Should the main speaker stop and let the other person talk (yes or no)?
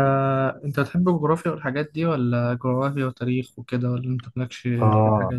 yes